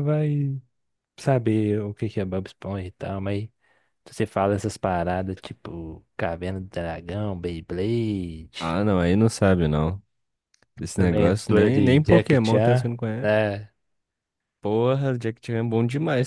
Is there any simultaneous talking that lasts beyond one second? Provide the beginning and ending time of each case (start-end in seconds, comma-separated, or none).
11.0-13.3